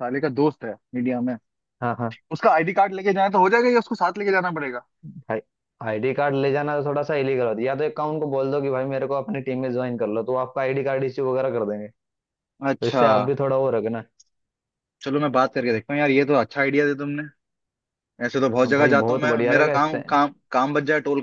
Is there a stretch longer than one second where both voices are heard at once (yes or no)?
yes